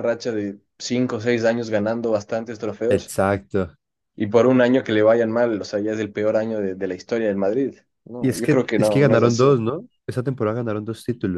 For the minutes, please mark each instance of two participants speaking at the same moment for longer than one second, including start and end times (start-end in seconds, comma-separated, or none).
8.2-9.5